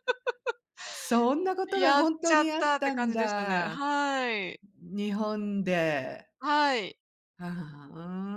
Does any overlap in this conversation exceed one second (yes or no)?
yes